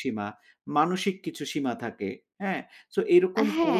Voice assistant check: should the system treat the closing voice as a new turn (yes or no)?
yes